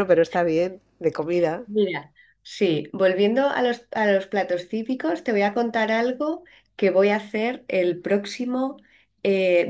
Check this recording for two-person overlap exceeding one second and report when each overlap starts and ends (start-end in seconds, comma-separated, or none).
none